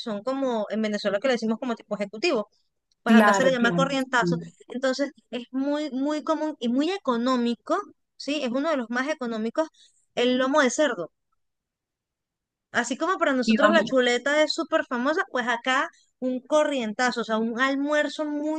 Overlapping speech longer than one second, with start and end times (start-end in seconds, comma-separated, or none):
3.0-4.5